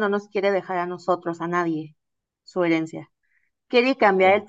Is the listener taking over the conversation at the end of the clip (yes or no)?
no